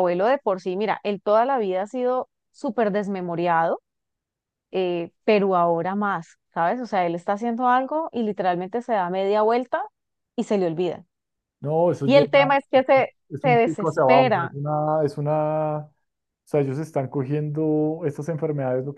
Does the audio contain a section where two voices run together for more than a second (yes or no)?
yes